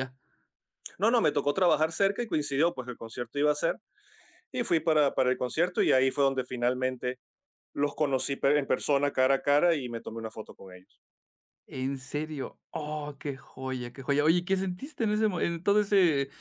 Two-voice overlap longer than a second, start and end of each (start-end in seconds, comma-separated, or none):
none